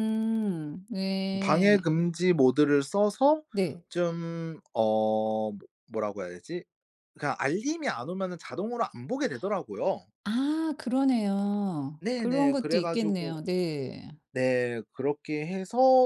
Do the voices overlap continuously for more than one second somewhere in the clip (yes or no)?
yes